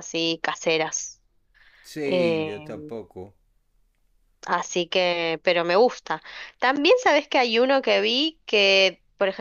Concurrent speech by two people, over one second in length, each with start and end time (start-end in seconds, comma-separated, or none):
none